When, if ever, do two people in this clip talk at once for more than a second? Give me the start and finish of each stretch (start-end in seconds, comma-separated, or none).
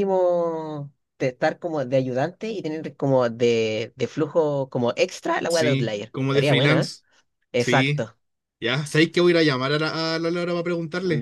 5.5-6.9